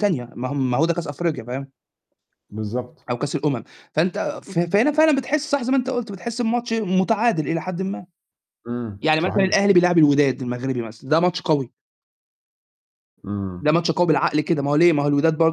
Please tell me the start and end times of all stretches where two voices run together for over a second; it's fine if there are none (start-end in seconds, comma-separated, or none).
none